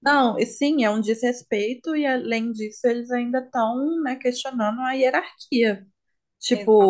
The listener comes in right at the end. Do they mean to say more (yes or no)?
no